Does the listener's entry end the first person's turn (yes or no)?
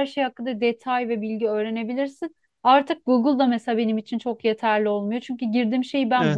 no